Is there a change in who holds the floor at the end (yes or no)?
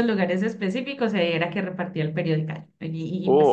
yes